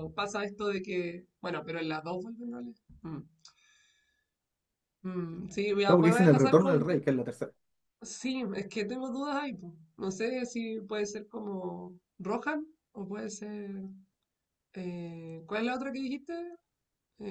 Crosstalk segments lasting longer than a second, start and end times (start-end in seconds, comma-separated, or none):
5.8-7.0